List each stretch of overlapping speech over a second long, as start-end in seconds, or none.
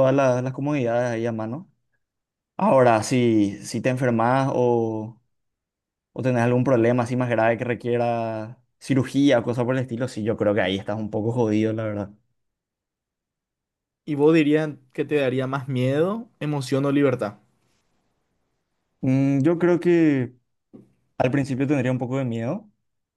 none